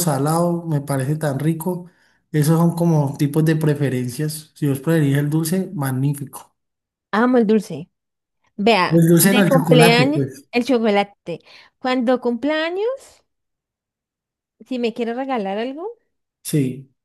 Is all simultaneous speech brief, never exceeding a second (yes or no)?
no